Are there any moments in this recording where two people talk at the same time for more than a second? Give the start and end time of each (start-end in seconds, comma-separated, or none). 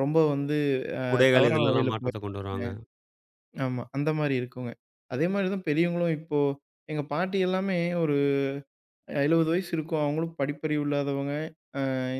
1.1-2.7